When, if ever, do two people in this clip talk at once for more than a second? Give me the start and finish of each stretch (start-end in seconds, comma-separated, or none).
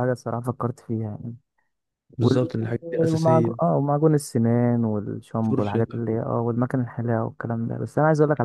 2.2-3.7